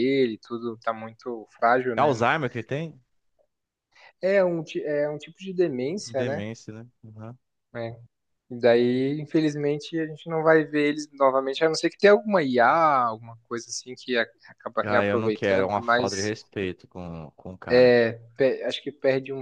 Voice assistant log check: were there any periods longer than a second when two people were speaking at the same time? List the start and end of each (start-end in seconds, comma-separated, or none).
14.8-16.1